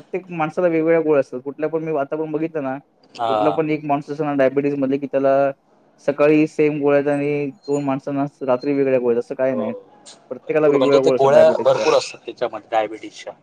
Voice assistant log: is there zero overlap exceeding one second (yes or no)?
no